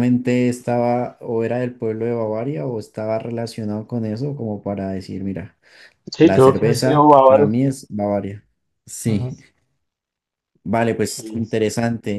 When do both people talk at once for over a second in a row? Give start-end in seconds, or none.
6.2-7.6